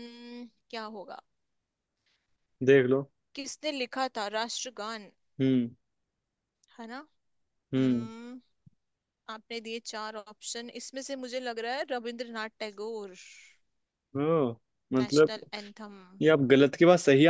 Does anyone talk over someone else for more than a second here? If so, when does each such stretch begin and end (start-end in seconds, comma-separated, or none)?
none